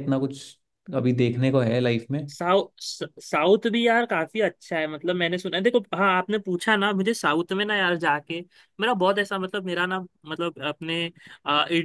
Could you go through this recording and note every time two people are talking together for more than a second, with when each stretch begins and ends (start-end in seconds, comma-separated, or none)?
none